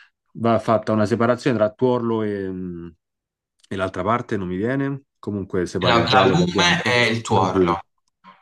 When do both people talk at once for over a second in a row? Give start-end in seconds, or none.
5.9-7.8